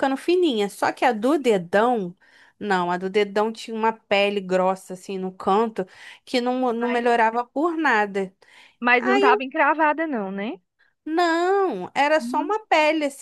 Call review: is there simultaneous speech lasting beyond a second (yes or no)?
no